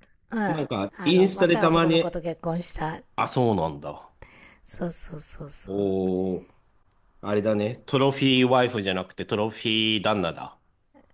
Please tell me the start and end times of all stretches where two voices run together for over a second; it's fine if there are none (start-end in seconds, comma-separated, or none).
1.0-2.2